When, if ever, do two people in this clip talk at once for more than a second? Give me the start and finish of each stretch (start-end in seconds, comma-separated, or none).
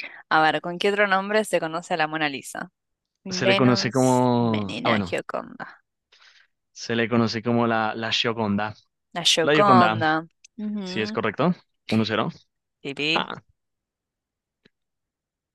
3.3-5.1